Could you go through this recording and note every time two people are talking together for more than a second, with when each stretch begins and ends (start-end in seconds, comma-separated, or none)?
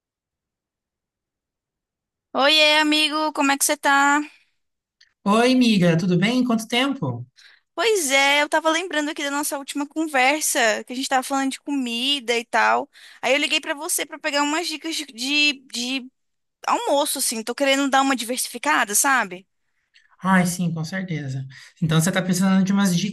none